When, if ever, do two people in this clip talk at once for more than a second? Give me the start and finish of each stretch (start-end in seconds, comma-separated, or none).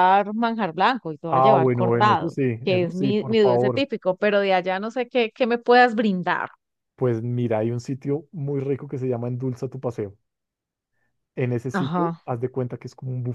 1.3-3.9